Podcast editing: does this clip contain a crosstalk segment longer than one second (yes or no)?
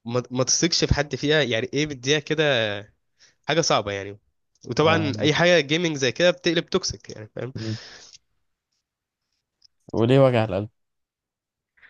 no